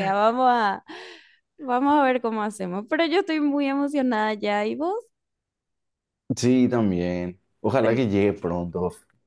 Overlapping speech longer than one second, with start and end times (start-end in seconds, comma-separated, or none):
none